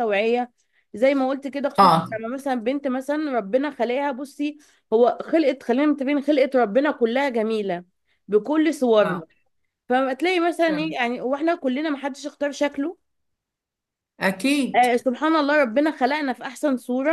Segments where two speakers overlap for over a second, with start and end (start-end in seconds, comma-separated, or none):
none